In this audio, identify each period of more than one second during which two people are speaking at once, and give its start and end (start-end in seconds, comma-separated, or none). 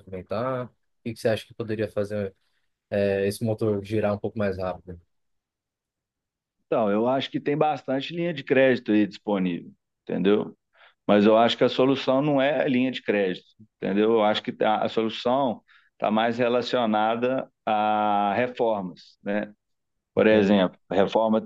none